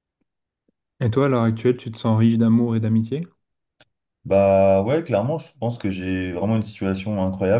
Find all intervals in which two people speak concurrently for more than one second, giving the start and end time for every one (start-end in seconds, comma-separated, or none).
none